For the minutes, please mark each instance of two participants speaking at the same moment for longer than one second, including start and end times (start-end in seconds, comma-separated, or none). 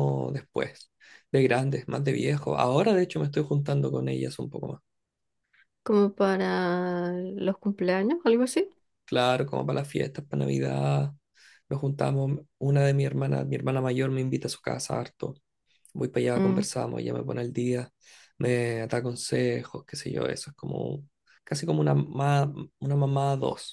none